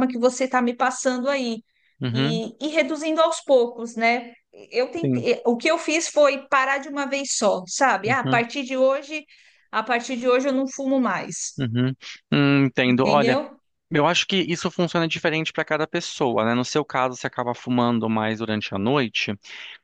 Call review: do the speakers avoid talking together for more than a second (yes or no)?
yes